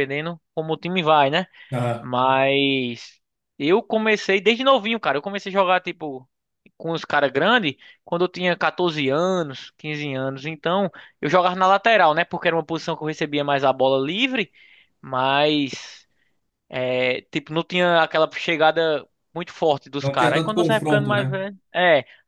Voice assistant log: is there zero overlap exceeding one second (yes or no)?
no